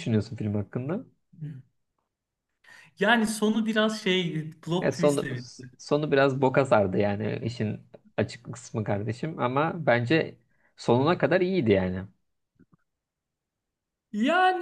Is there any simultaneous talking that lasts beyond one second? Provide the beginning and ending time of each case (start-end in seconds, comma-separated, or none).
none